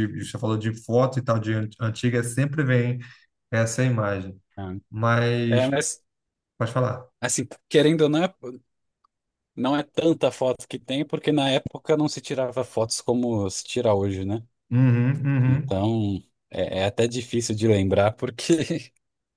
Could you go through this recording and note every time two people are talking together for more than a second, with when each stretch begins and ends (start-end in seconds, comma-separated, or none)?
none